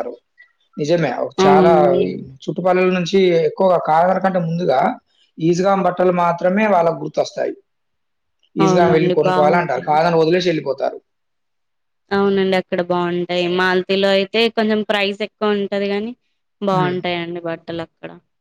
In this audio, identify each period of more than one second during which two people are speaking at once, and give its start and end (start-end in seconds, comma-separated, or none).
8.7-10.0